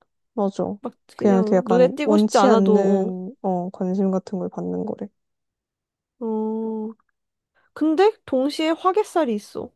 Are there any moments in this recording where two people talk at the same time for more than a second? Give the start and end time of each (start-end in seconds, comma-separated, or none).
1.2-3.1